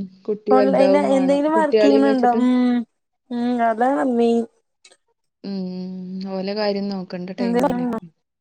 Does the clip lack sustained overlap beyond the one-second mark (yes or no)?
no